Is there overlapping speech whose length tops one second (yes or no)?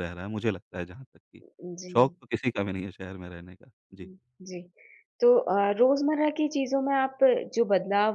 no